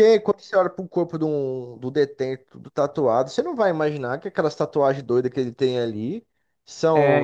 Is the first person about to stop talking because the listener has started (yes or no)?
no